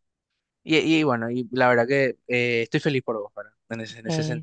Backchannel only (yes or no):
yes